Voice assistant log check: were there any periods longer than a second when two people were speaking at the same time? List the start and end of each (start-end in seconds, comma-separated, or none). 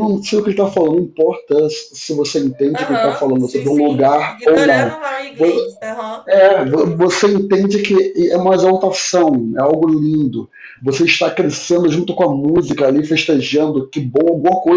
2.7-5.0